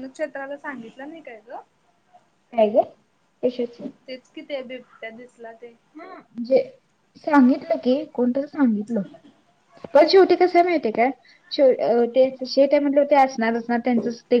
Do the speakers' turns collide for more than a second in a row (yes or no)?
no